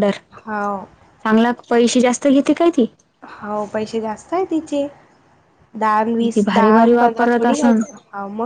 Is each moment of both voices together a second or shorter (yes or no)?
no